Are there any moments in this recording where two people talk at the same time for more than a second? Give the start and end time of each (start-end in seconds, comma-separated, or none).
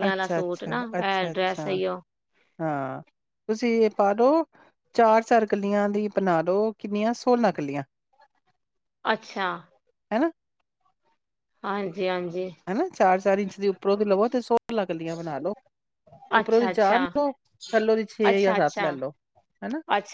none